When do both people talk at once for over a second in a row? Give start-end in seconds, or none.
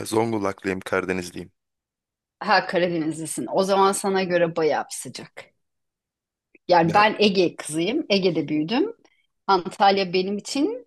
none